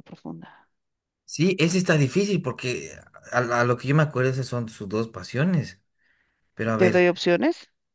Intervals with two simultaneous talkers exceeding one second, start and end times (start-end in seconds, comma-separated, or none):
none